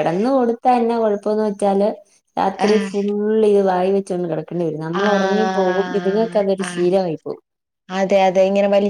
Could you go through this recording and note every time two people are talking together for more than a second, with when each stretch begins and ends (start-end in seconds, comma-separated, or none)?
5.0-6.9